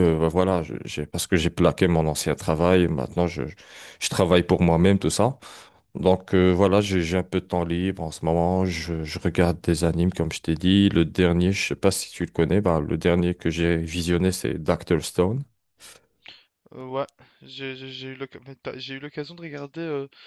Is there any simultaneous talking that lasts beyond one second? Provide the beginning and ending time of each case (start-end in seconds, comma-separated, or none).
none